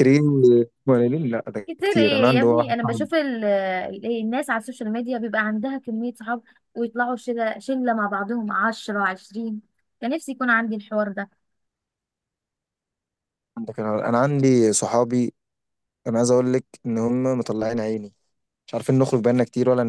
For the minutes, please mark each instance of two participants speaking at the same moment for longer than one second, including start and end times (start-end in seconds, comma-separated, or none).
1.7-3.1